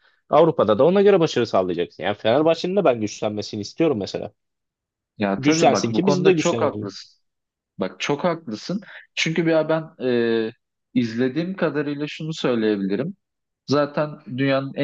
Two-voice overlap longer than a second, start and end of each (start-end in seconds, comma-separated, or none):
5.4-6.9